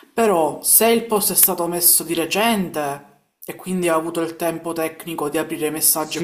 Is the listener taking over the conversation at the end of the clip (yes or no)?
yes